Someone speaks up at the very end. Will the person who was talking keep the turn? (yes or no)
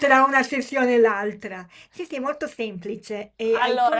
yes